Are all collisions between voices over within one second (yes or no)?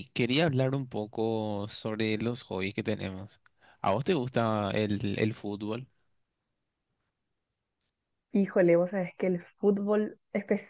yes